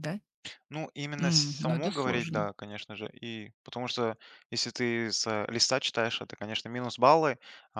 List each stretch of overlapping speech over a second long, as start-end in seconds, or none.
1.2-2.5